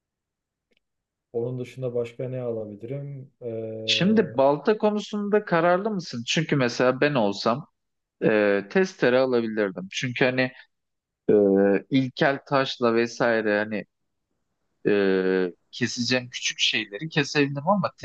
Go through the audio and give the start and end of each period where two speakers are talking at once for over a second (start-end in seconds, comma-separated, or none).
none